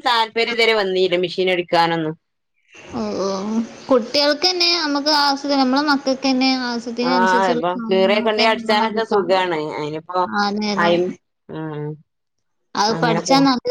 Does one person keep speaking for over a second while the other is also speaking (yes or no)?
yes